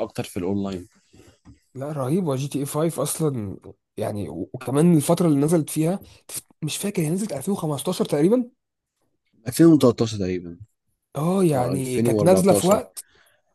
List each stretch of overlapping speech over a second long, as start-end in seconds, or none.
11.5-12.8